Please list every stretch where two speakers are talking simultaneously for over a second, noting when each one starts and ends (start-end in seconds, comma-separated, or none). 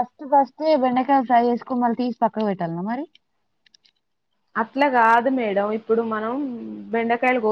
none